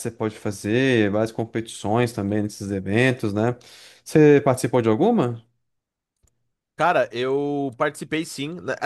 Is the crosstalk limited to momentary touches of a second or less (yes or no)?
yes